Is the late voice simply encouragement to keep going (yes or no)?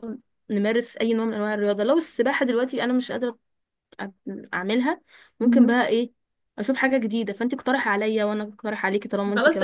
no